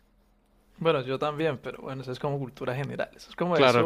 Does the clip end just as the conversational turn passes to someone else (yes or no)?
no